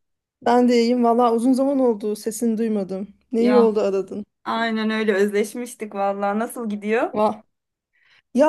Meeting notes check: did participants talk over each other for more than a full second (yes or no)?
no